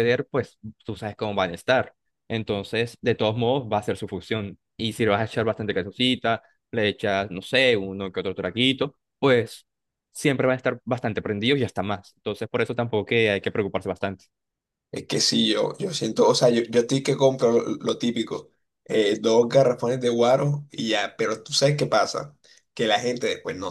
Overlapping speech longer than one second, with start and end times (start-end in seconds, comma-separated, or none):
none